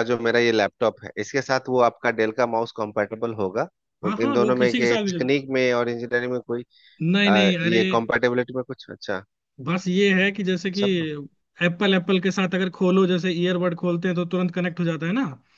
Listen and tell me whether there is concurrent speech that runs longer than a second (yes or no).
yes